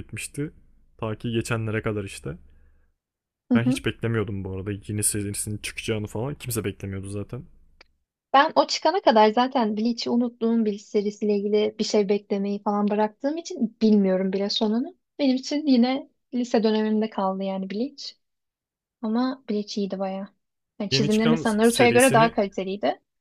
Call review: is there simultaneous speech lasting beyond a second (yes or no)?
yes